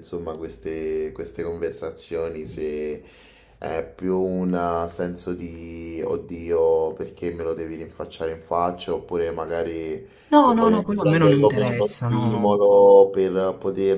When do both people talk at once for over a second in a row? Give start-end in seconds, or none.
10.4-12.4